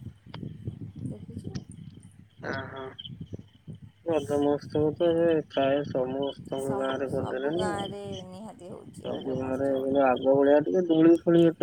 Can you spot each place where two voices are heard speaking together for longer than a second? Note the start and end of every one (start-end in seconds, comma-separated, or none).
none